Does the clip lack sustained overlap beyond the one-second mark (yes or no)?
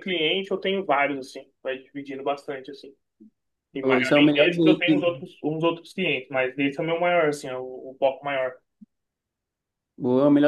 no